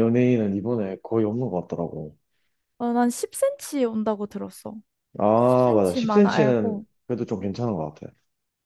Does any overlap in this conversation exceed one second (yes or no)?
yes